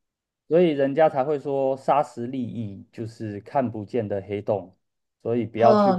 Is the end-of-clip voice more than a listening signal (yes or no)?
yes